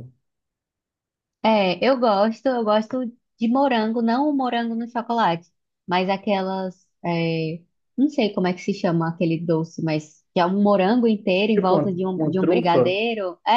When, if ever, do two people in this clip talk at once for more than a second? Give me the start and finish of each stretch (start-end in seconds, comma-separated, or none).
11.5-12.9